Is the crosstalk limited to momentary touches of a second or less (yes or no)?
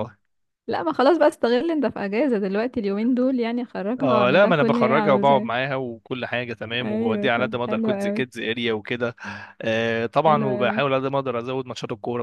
no